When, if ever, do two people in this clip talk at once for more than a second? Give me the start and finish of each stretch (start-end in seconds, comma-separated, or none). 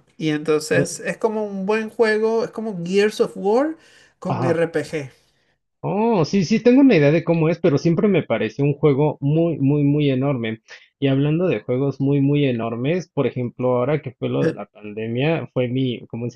none